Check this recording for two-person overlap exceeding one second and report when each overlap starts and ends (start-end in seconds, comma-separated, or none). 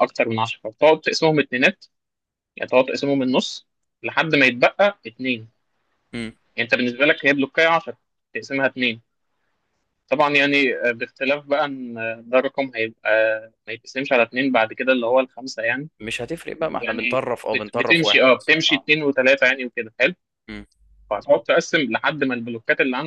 16.6-18.9